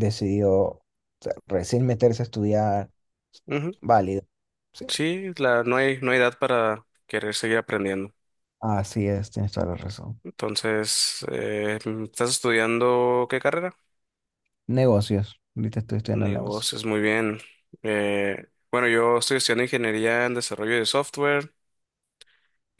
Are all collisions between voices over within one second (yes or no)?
yes